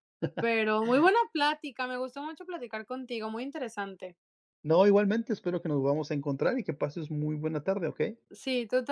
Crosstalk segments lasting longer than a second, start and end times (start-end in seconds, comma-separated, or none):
none